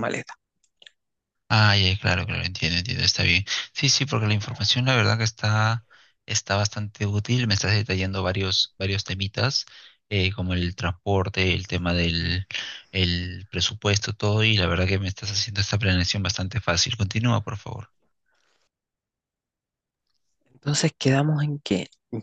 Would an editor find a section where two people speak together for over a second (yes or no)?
no